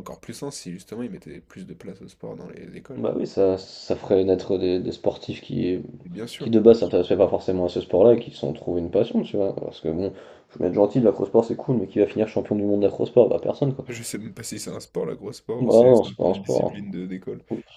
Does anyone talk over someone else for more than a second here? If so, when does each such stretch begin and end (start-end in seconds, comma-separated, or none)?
15.6-17.0